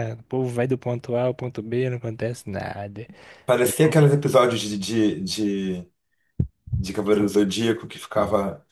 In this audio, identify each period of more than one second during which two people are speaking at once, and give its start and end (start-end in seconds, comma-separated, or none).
none